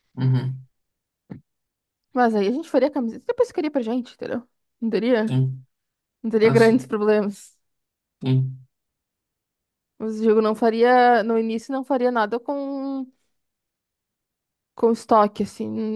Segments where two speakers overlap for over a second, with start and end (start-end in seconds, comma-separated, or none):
none